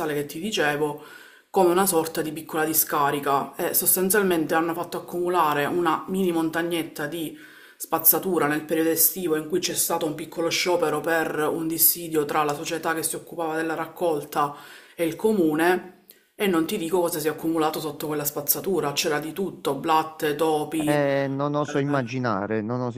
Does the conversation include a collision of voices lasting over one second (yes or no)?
no